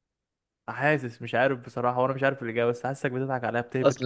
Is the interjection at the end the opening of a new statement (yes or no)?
yes